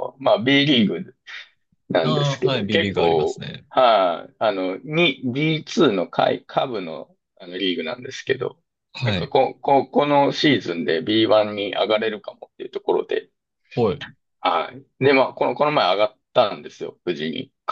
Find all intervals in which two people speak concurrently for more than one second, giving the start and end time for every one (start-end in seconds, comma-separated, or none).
2.0-3.7